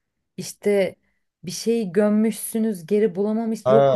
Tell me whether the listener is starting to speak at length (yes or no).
yes